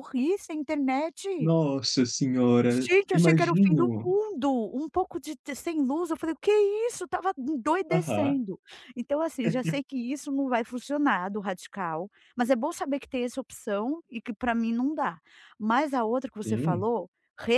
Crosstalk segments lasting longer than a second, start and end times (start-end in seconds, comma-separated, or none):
2.7-4.1